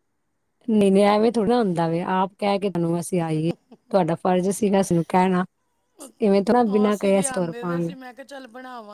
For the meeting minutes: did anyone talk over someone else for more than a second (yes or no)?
yes